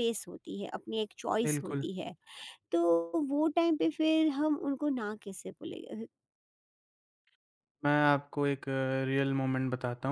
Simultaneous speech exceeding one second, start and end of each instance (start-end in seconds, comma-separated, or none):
none